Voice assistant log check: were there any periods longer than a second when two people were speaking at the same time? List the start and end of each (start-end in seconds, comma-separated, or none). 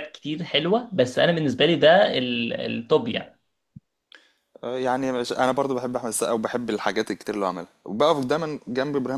none